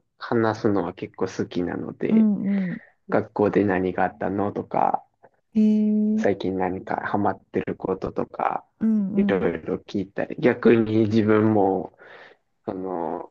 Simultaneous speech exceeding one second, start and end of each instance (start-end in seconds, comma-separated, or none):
none